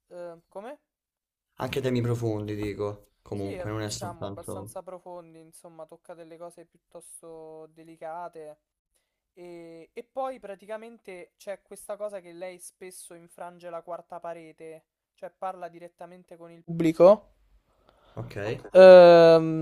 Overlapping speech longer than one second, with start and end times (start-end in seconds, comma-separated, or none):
3.3-4.8